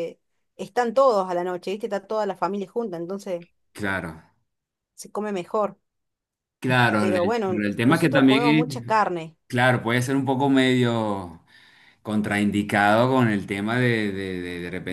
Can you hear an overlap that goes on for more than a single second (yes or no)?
yes